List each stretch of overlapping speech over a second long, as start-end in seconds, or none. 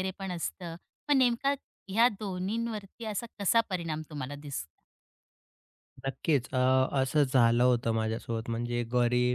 none